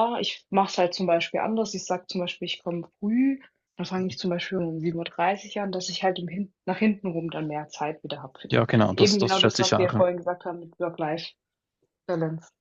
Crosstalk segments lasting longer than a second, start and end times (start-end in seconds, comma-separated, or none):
8.5-10.0